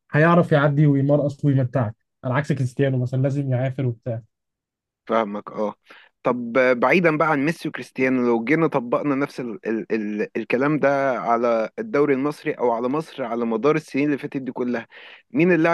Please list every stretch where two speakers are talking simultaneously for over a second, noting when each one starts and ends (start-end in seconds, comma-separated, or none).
none